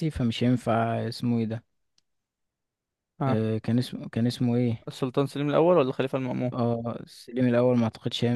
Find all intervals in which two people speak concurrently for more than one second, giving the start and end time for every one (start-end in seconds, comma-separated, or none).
none